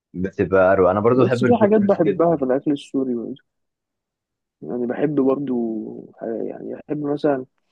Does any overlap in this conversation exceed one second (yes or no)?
yes